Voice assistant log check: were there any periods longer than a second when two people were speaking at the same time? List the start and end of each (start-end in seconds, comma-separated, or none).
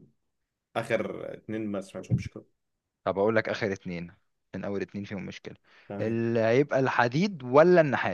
none